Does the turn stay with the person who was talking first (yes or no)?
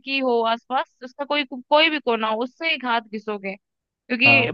yes